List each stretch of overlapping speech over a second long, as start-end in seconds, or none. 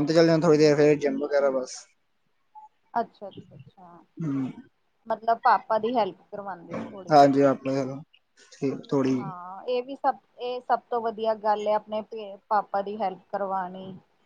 none